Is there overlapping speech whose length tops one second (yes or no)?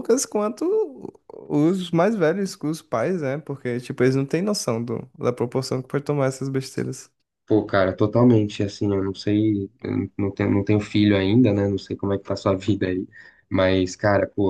no